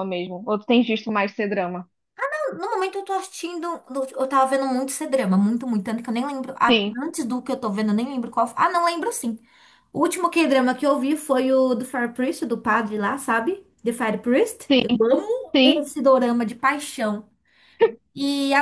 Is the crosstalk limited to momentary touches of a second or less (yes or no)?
yes